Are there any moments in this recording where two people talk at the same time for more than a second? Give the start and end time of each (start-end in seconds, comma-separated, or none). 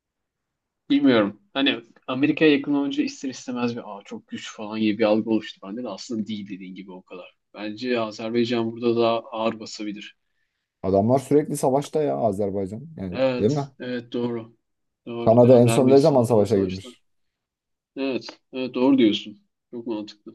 15.3-16.9